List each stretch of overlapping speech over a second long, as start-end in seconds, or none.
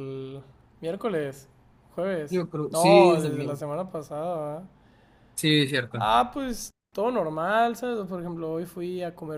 2.3-3.6